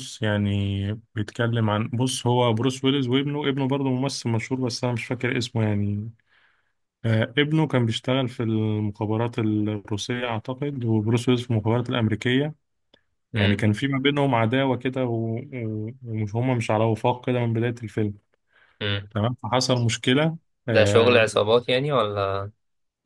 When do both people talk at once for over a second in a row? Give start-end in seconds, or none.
none